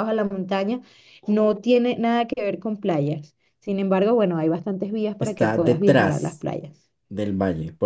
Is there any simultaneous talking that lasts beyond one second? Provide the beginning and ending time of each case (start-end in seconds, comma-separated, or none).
5.2-6.5